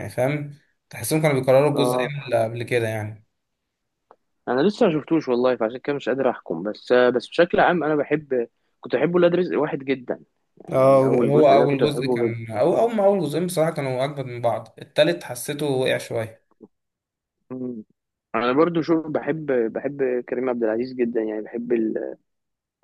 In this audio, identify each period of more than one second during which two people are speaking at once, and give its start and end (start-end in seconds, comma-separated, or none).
10.7-12.2